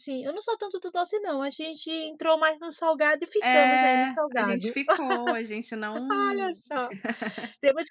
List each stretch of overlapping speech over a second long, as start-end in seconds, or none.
3.4-4.7